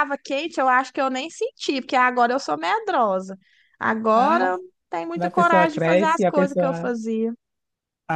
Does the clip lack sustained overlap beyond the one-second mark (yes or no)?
no